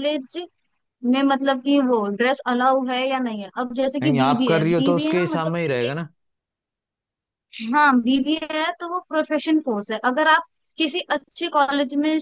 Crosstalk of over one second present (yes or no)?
yes